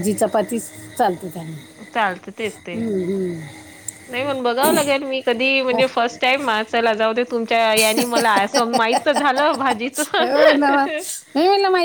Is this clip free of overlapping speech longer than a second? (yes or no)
yes